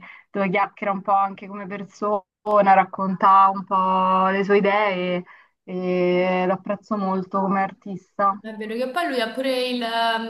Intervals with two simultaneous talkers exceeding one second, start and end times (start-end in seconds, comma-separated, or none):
none